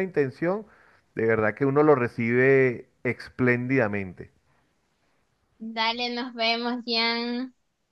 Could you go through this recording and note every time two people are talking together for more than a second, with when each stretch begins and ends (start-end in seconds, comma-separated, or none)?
none